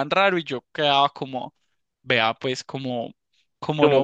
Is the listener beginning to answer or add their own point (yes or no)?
yes